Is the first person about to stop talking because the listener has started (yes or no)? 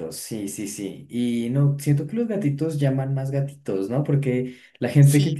no